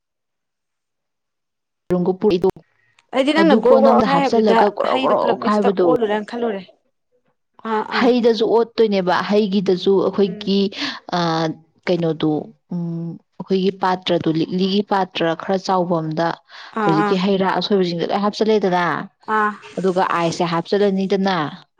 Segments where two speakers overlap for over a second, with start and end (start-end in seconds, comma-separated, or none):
3.4-5.8